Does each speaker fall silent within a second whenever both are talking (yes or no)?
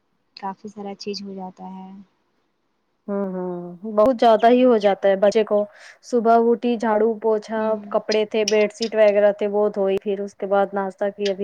yes